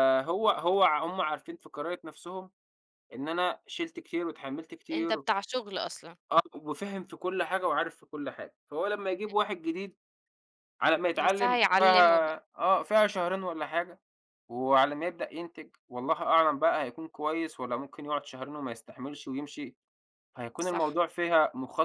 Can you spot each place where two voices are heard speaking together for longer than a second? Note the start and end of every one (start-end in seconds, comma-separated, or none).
11.2-12.4